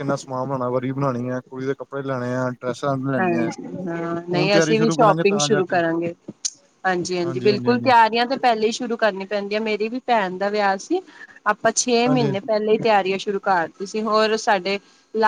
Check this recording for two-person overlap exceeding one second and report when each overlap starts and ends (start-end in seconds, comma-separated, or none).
4.3-5.8